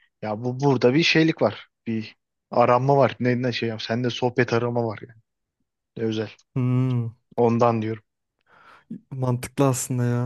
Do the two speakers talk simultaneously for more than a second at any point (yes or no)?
no